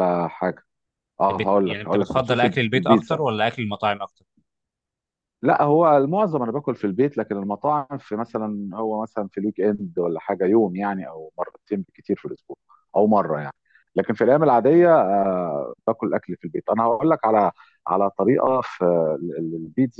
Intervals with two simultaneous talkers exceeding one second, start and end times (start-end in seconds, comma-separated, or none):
1.3-3.2